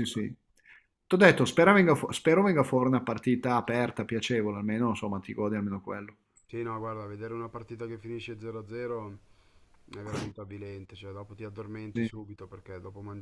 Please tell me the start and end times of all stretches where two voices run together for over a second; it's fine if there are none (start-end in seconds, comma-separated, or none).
none